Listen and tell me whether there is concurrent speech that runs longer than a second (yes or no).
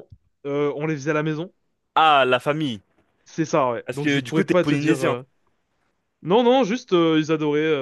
yes